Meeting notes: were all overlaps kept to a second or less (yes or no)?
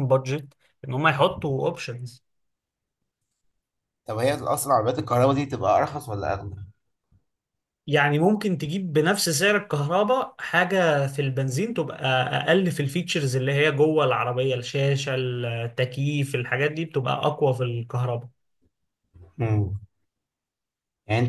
yes